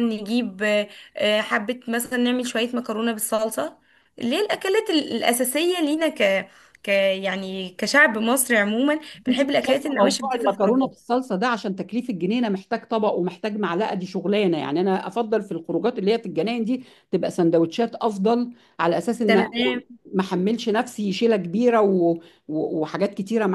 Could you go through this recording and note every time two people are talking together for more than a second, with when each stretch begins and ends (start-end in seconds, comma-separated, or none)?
9.3-11.0